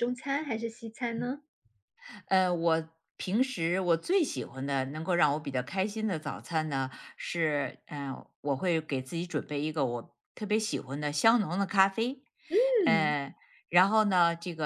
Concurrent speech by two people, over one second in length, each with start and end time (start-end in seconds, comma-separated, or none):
none